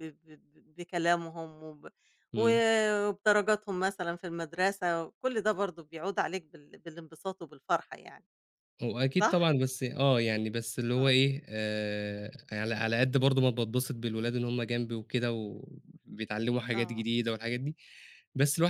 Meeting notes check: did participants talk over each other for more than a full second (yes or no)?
no